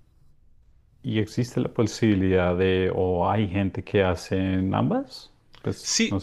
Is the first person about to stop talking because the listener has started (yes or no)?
yes